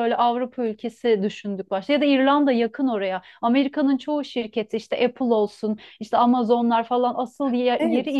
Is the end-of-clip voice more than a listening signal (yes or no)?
yes